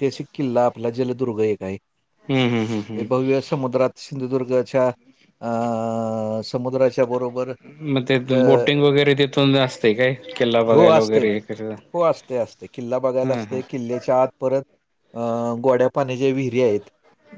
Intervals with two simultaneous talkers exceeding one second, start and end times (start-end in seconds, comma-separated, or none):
none